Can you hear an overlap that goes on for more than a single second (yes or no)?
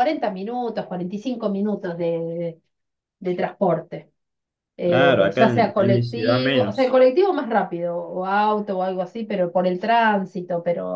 yes